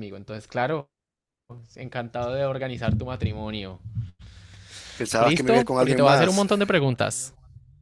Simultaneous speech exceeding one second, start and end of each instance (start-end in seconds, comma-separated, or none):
5.2-6.5